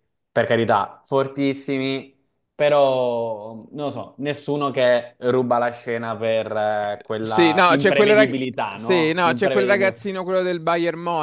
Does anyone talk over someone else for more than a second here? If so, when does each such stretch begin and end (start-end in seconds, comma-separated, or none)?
7.2-10.0